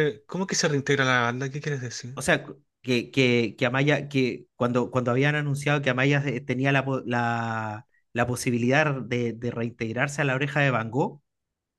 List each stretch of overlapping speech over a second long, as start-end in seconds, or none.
none